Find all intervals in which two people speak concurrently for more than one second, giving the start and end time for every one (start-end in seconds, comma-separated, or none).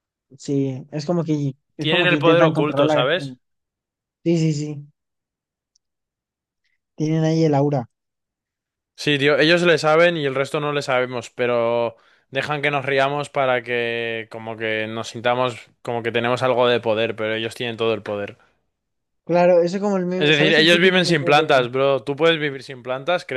1.8-3.0, 20.2-21.7